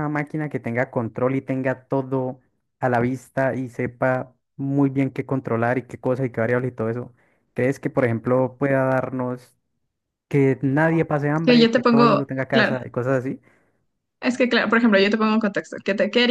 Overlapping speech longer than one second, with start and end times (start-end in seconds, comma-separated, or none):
11.4-12.8